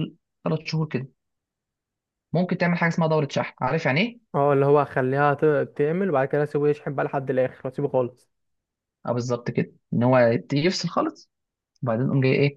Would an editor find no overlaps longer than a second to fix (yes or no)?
yes